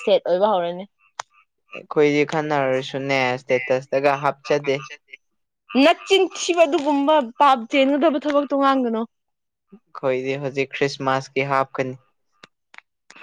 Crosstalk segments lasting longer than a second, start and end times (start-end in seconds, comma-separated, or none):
none